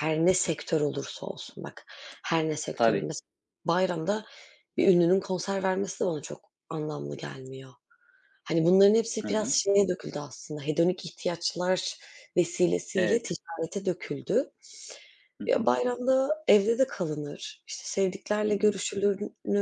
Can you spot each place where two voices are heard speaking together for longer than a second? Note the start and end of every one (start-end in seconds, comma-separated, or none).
none